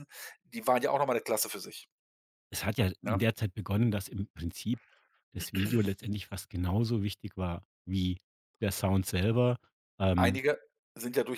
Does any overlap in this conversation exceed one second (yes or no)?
no